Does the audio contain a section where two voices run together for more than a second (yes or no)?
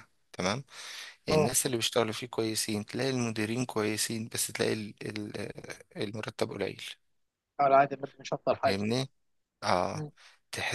no